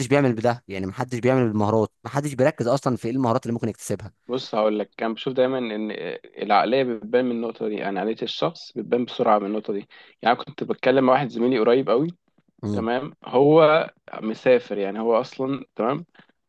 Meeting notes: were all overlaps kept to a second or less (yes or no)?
yes